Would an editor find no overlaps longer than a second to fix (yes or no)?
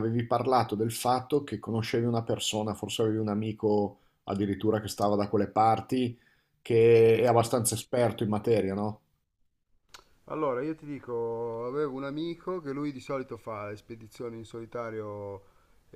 yes